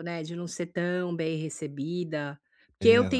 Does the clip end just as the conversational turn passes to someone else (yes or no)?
no